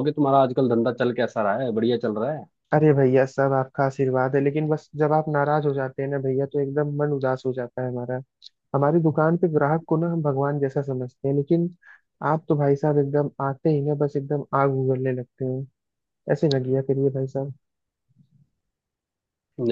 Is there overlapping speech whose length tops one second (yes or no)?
no